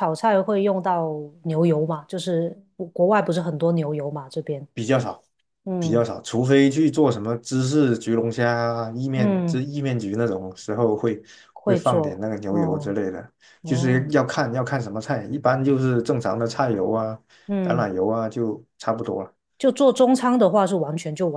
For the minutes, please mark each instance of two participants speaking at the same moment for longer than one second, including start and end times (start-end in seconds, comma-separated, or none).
11.6-13.0